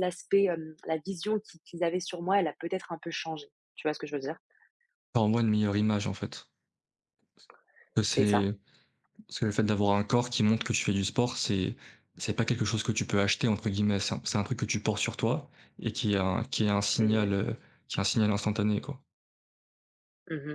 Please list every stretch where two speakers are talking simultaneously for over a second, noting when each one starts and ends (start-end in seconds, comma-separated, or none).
none